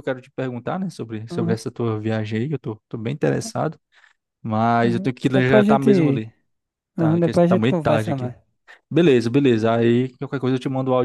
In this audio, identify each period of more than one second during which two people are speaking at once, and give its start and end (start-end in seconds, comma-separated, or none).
4.8-6.2, 7.0-8.3